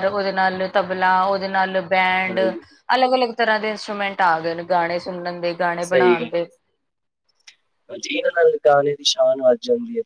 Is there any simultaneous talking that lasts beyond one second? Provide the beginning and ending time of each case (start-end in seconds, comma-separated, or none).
none